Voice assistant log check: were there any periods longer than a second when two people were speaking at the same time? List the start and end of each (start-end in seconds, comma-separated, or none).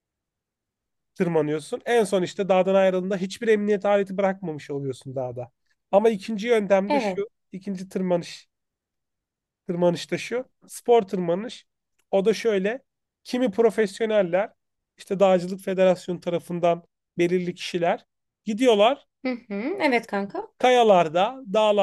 none